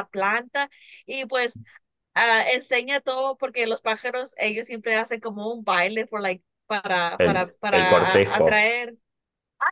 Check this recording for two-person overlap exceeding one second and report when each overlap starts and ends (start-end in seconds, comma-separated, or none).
7.2-8.7